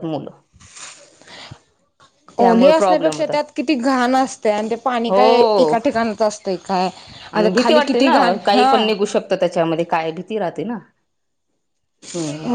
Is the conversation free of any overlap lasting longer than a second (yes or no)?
yes